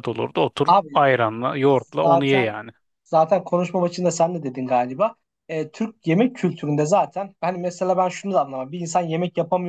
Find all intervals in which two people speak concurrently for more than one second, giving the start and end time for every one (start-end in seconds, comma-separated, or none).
none